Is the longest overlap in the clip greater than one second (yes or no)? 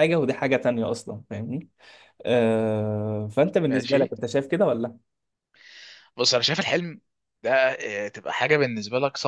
no